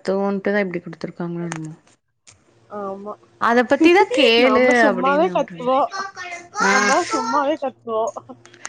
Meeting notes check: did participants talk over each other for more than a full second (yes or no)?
yes